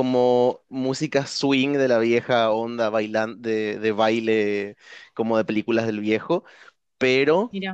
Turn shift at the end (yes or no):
no